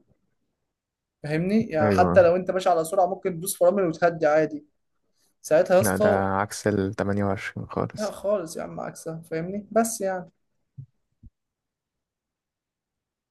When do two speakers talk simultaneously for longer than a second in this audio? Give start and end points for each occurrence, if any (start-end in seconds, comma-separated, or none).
none